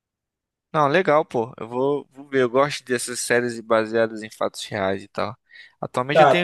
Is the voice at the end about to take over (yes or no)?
no